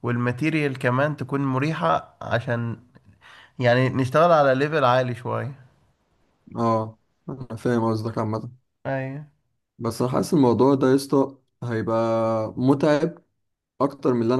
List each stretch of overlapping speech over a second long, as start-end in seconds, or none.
none